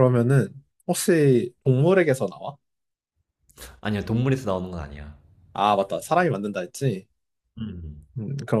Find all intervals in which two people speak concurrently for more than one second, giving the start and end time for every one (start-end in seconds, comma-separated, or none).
none